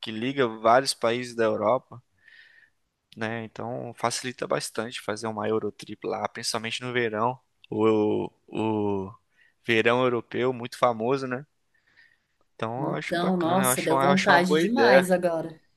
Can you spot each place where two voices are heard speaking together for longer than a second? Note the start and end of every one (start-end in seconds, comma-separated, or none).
12.8-15.1